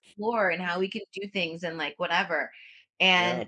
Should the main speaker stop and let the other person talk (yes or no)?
no